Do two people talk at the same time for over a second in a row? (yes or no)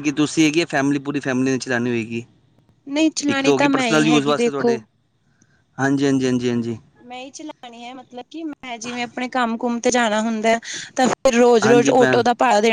yes